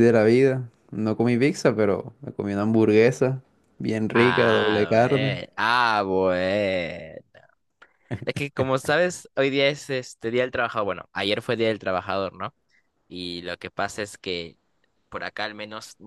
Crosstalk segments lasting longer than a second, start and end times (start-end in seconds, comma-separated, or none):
4.1-5.4